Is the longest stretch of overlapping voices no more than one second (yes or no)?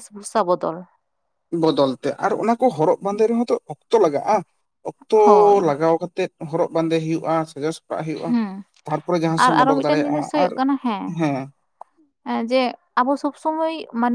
yes